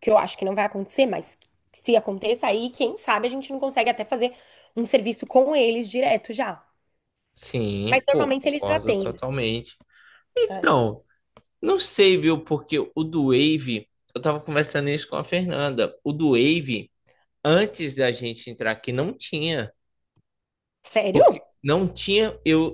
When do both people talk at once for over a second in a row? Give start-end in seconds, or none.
7.8-9.2